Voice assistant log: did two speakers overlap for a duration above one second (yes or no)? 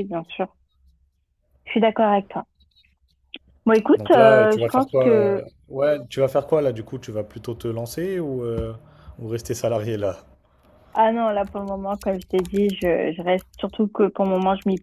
yes